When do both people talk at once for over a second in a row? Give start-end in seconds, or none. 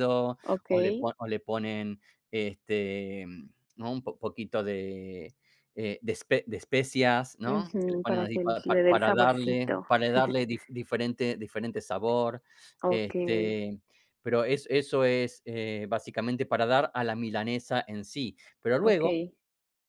7.4-9.7